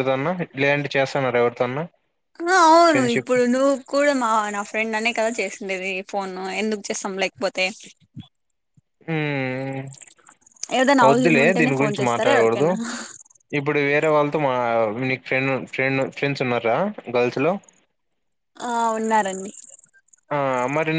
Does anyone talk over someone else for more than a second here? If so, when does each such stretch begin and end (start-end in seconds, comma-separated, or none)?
11.1-12.7